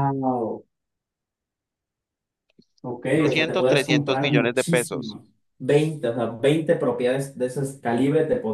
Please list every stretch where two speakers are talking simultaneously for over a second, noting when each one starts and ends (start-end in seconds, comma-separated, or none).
3.1-5.2